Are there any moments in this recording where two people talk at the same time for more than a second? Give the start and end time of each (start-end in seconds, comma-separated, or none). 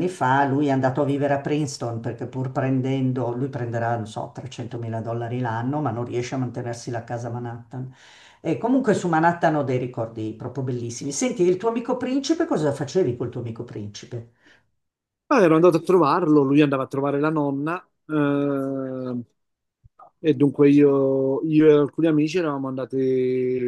none